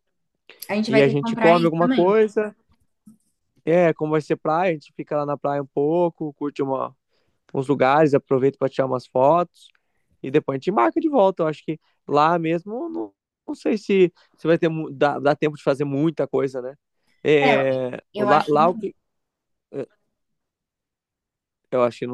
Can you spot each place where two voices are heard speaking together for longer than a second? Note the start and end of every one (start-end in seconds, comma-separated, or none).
0.9-2.1